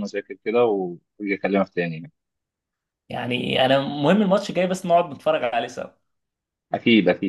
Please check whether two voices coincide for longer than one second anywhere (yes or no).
no